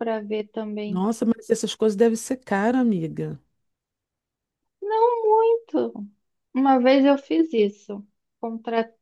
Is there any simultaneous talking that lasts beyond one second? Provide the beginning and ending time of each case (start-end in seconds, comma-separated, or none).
none